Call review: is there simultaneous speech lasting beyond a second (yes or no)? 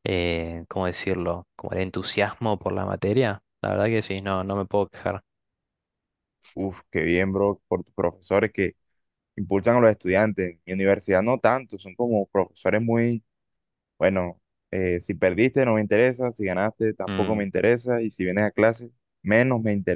no